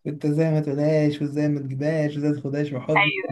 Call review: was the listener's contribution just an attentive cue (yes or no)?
yes